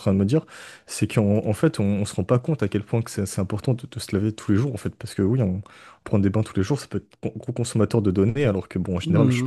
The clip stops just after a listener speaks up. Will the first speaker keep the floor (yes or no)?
no